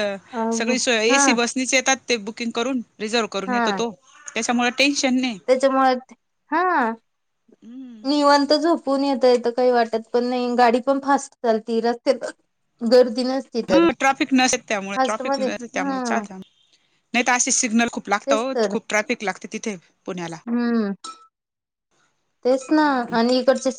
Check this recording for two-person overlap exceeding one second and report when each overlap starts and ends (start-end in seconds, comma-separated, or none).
none